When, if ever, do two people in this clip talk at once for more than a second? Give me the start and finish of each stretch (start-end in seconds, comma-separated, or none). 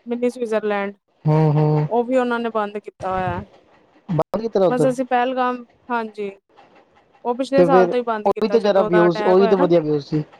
7.6-9.7